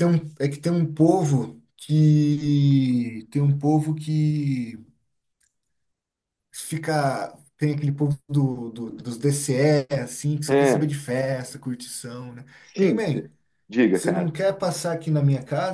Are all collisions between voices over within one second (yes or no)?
yes